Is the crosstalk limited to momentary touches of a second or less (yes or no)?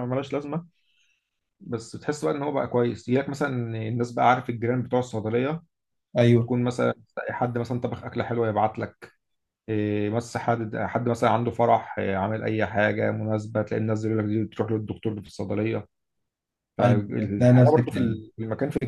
no